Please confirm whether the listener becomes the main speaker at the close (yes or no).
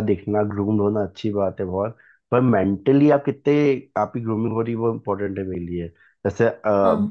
no